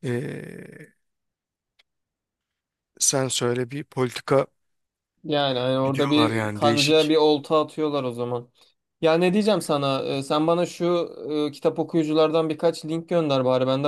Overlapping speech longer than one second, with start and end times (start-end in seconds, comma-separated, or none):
5.8-7.2